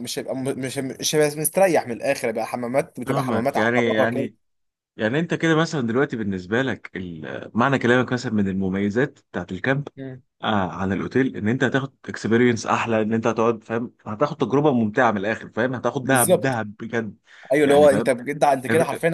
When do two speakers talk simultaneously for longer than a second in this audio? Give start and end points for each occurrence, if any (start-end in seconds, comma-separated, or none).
3.1-4.3